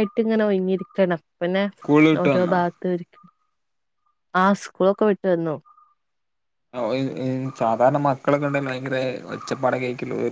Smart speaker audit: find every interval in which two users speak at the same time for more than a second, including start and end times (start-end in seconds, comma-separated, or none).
none